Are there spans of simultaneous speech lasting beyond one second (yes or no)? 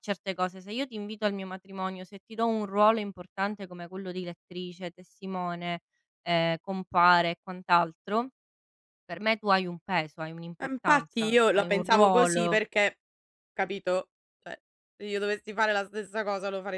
yes